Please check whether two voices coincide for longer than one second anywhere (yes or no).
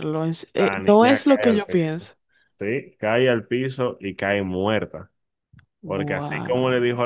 yes